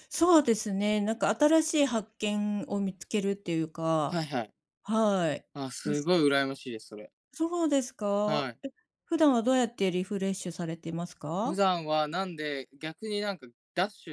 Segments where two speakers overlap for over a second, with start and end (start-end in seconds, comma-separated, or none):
none